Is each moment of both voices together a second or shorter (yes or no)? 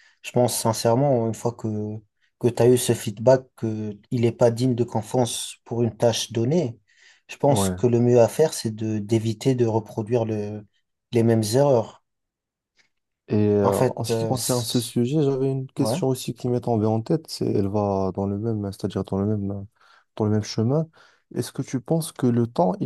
no